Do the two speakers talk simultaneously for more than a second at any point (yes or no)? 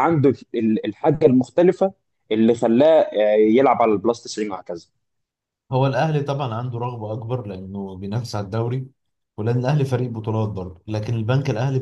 no